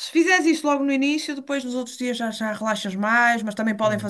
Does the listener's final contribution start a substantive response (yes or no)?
no